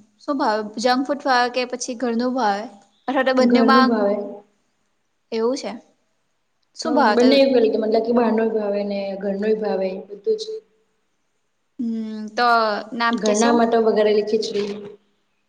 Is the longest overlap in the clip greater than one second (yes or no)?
no